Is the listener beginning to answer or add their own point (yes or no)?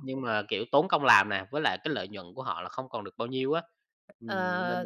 yes